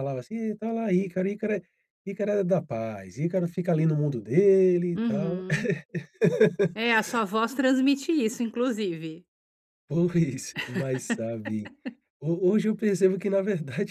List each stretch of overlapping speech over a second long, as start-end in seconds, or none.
none